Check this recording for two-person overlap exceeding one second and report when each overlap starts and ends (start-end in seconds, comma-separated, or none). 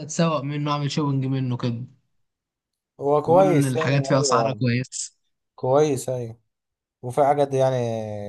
3.2-4.6